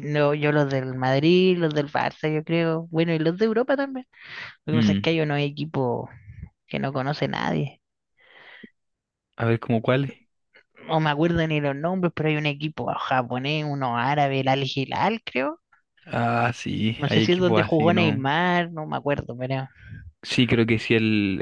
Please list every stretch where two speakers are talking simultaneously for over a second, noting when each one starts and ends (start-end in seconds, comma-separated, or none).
17.0-18.2